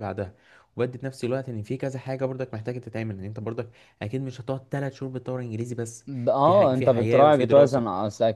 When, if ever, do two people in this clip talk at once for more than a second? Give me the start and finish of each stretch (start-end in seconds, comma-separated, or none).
6.4-7.8